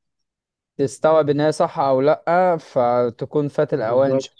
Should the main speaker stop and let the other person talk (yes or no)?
no